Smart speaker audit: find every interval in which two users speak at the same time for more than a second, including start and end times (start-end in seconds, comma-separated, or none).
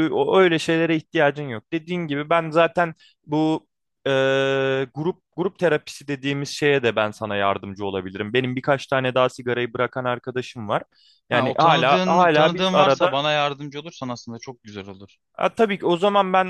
11.3-13.2